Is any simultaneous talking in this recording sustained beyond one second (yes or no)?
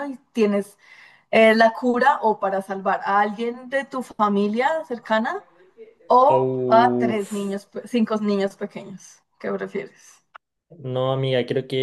yes